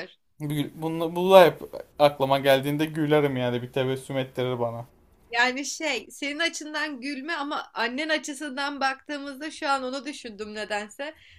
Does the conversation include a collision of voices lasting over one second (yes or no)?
no